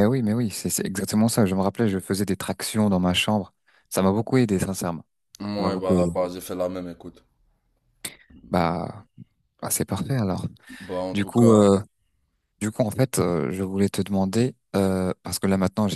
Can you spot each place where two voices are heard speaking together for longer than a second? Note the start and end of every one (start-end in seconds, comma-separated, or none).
none